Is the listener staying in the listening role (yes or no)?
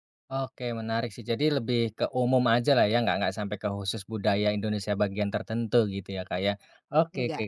yes